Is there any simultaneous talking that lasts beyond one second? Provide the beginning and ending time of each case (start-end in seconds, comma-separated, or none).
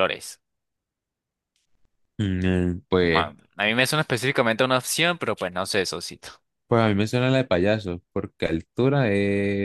none